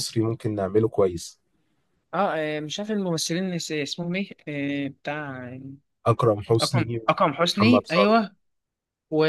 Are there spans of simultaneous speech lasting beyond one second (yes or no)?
yes